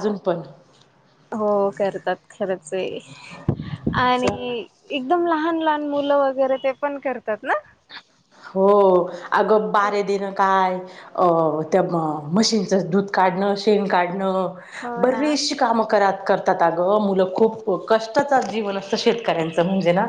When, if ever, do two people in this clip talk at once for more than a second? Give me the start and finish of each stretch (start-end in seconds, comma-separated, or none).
none